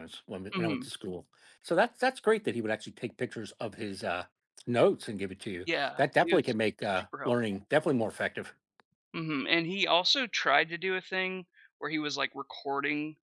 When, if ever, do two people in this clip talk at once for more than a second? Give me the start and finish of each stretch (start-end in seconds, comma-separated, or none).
5.7-7.7